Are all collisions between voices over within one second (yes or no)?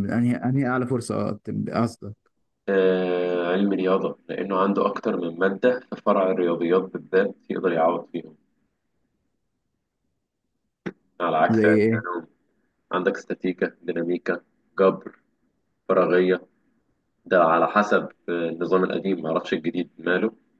yes